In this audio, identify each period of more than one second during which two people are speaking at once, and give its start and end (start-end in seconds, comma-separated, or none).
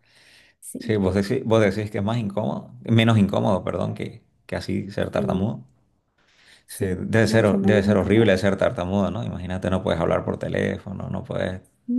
6.7-8.3